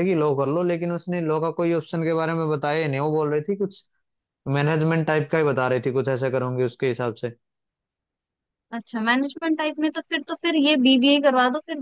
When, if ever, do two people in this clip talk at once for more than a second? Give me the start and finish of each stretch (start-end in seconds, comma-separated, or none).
none